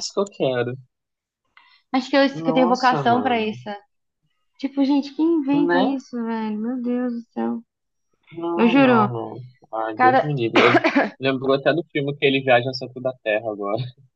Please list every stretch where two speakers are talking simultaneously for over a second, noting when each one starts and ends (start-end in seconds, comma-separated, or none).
2.3-3.6